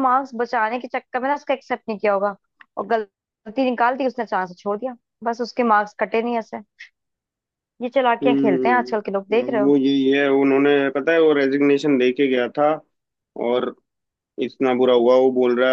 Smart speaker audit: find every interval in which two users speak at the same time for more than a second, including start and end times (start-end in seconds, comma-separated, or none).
8.2-9.7